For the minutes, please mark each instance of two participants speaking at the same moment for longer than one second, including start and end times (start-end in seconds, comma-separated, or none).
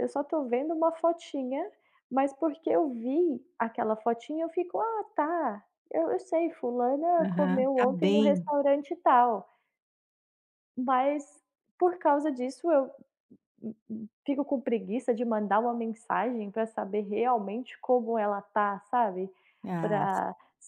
7.2-8.5